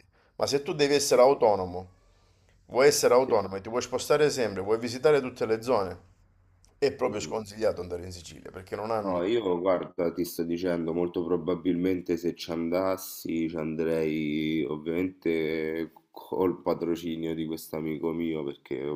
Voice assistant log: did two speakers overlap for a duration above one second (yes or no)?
no